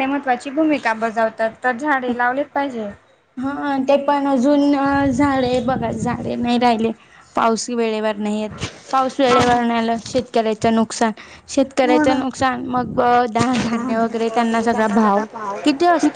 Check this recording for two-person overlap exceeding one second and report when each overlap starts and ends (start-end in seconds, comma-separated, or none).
none